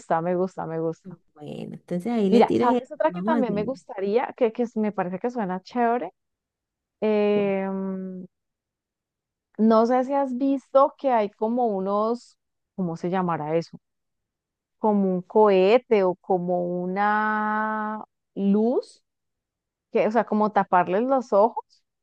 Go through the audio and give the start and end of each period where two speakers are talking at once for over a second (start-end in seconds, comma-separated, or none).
2.3-3.8